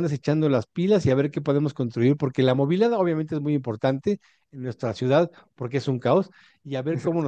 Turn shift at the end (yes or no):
no